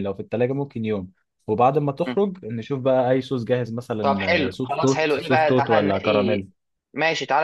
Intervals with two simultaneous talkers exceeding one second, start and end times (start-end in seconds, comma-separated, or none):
4.0-6.4